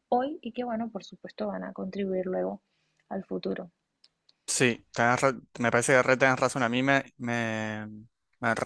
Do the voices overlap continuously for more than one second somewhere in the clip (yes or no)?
no